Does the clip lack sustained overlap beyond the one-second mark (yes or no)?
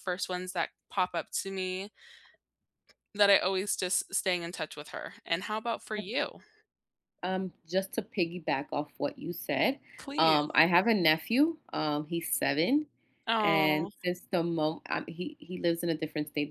yes